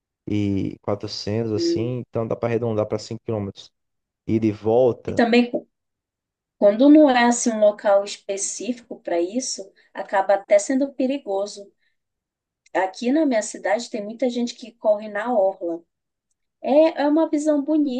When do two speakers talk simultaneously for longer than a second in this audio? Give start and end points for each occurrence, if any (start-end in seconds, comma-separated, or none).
none